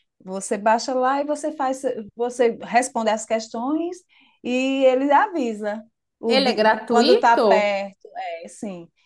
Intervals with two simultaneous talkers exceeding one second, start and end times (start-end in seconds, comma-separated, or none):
6.3-7.8